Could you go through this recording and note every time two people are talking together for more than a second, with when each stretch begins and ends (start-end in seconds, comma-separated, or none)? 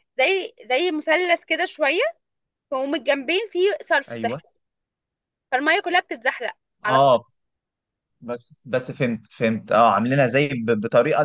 none